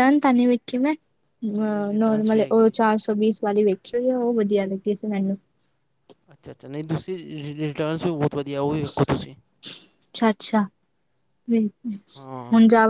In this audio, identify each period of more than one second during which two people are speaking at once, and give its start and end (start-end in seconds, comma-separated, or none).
1.5-2.7